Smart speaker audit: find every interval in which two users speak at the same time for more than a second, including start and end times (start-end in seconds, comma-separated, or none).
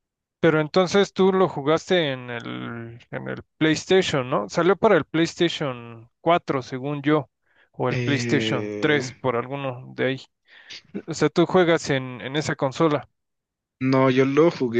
7.9-9.1